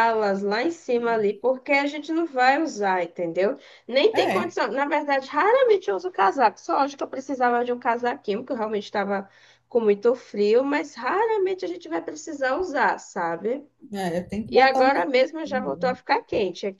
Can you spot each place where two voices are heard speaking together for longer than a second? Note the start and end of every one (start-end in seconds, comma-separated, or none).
14.5-16.0